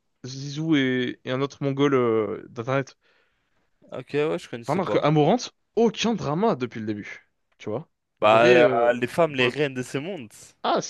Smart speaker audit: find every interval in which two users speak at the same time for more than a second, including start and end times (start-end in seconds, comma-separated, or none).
8.2-9.6